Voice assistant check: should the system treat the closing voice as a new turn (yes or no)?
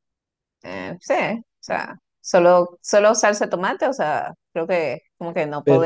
no